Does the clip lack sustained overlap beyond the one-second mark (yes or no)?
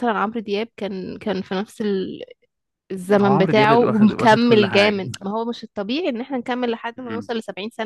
no